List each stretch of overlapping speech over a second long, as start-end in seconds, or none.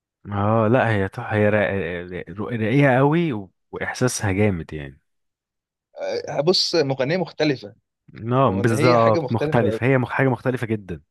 8.4-9.8